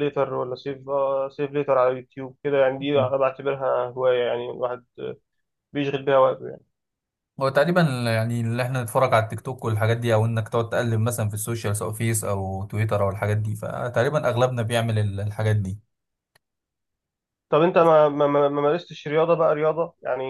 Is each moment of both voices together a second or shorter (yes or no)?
yes